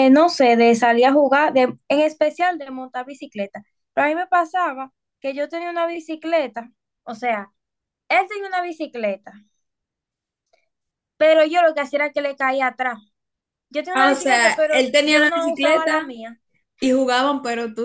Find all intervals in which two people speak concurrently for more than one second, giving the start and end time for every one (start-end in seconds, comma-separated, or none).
13.9-16.1